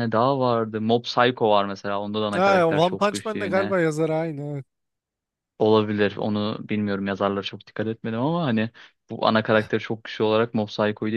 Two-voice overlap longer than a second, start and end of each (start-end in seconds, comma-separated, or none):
2.4-3.8